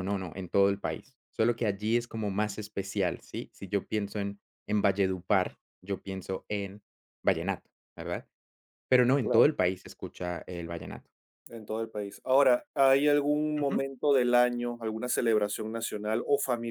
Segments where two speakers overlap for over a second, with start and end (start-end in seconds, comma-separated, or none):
none